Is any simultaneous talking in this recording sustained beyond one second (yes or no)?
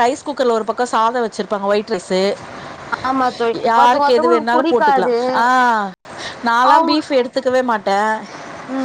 yes